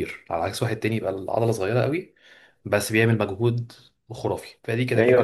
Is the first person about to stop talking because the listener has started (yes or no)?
yes